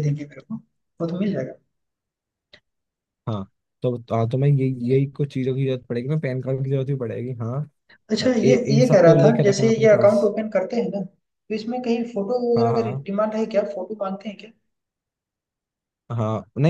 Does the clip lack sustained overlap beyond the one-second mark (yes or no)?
no